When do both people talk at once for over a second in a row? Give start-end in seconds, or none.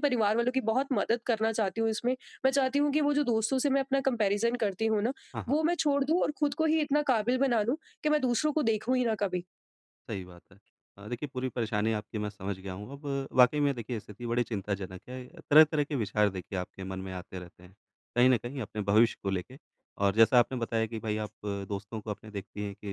none